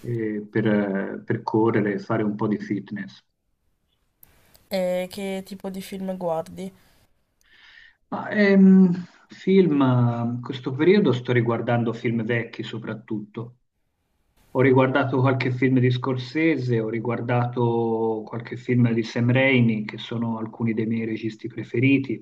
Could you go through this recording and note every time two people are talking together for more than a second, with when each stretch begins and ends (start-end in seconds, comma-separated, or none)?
none